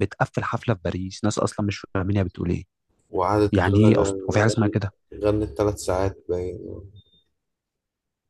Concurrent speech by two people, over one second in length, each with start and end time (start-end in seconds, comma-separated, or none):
3.5-4.8